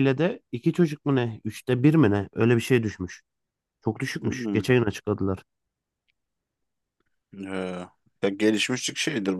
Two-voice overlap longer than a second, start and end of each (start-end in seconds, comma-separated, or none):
none